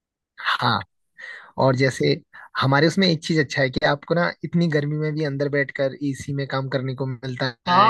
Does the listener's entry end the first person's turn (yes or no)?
yes